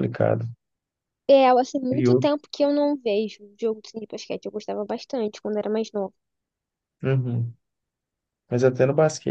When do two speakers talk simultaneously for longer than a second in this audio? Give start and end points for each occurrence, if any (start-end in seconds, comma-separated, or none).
none